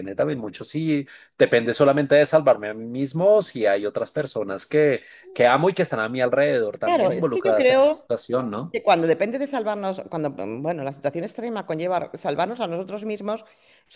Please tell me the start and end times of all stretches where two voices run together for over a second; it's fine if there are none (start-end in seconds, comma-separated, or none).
6.8-8.1